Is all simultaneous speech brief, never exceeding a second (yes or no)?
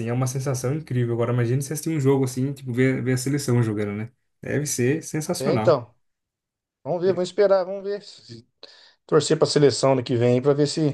yes